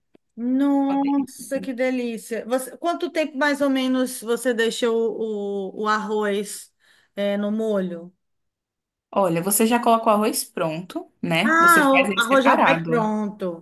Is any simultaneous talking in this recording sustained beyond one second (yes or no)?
yes